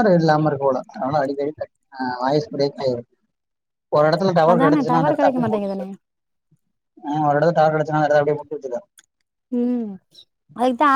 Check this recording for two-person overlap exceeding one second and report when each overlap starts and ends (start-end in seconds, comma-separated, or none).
4.5-5.8